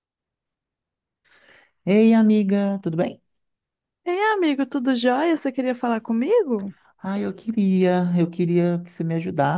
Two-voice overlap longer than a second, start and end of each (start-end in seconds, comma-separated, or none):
none